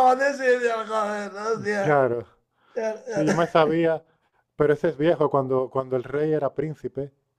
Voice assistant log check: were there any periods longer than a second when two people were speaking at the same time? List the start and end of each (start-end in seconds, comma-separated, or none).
none